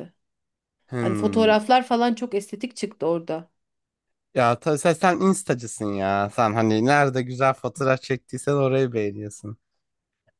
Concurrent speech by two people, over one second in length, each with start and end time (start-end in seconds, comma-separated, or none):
none